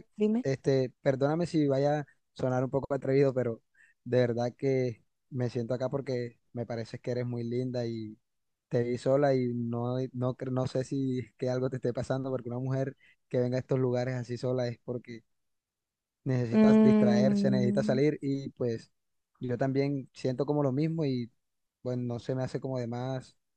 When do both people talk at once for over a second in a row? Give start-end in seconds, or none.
16.5-18.0